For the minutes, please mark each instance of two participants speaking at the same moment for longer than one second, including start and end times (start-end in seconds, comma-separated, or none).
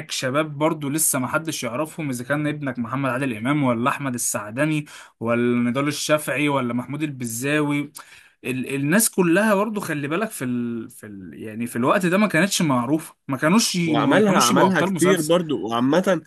13.8-15.3